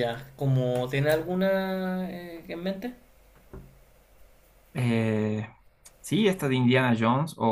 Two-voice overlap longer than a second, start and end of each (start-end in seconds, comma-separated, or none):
none